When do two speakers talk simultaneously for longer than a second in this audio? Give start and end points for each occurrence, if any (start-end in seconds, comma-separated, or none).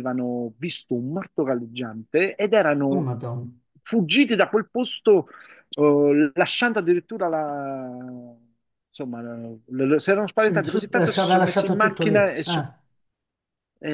10.5-12.7